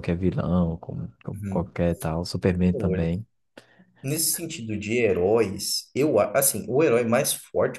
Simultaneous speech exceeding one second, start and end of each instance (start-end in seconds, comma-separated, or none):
none